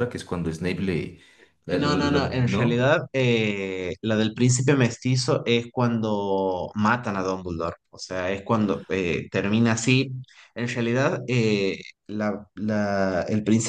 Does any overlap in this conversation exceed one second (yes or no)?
yes